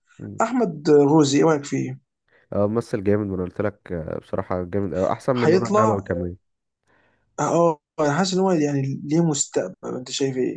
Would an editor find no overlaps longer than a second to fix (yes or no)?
yes